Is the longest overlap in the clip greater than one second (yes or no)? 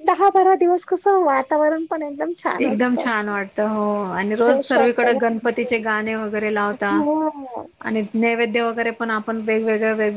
yes